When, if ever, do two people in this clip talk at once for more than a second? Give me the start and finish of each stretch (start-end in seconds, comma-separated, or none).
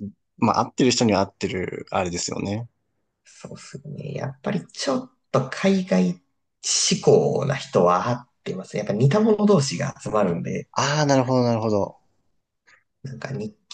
none